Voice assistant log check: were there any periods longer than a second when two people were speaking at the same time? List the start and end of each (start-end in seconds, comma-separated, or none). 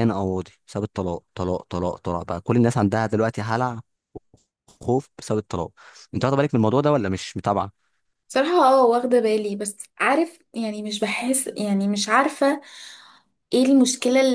none